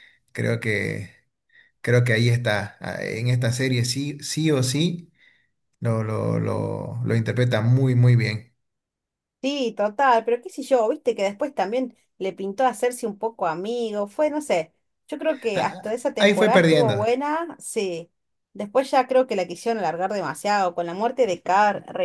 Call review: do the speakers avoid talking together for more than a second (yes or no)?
no